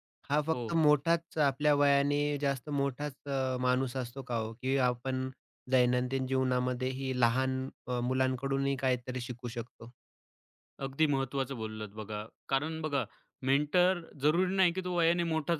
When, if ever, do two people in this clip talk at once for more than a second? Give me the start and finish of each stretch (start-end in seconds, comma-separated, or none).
none